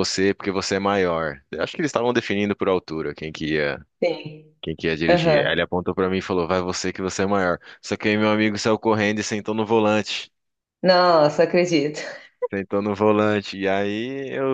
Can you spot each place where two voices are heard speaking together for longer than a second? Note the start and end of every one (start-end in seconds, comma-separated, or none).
none